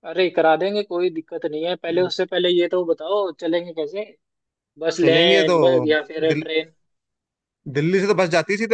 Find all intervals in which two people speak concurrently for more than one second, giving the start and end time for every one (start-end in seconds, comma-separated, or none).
none